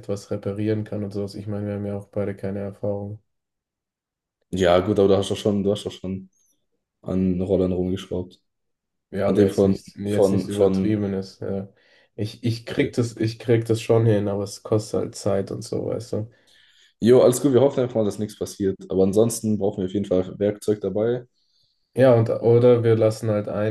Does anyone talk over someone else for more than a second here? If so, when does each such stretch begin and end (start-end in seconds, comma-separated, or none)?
9.3-11.1